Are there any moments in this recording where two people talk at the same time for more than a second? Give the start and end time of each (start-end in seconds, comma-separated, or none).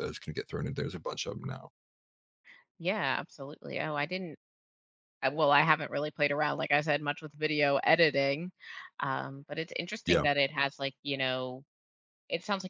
none